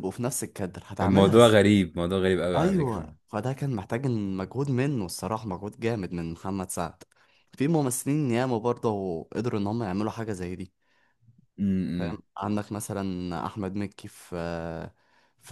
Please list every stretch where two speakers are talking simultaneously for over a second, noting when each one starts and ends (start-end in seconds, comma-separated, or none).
none